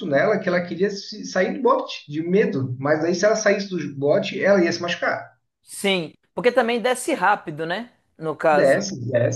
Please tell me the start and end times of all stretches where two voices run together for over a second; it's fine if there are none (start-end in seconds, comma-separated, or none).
none